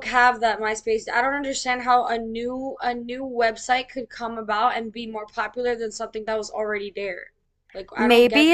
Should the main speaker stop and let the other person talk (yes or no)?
yes